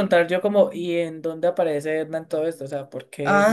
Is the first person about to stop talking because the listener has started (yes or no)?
yes